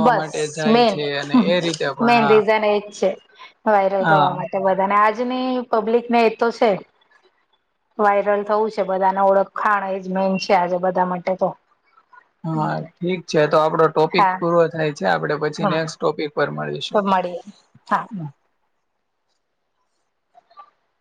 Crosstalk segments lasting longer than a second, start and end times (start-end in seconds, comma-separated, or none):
none